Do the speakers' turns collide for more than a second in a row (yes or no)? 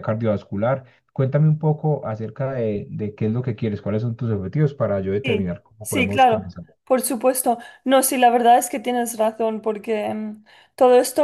yes